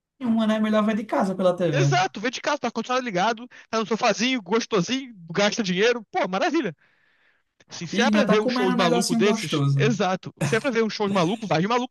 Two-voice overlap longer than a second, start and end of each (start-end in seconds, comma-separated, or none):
7.9-9.9